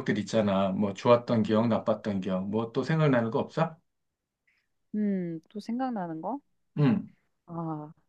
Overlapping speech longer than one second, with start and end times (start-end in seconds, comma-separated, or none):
none